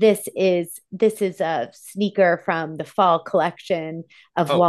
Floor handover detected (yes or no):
yes